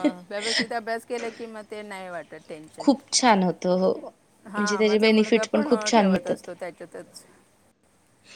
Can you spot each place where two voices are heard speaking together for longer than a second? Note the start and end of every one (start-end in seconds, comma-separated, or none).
4.5-6.5